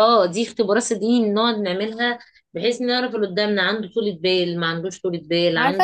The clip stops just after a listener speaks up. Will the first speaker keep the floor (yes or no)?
no